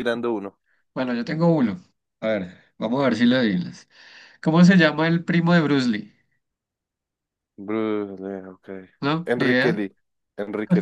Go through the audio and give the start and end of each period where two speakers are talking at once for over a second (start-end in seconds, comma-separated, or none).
none